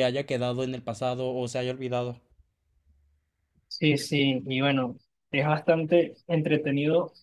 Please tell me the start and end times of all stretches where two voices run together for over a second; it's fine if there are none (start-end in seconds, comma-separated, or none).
none